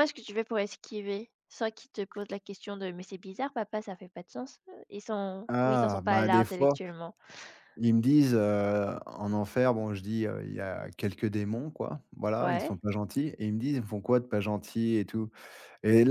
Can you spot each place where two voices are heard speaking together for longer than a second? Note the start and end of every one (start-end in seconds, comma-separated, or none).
5.5-6.8